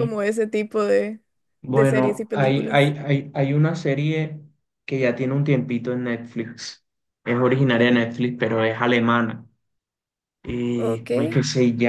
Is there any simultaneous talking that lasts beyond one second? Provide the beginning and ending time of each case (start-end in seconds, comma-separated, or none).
1.7-2.9